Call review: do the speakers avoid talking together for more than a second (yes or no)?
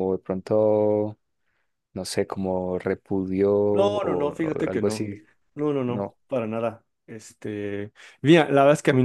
no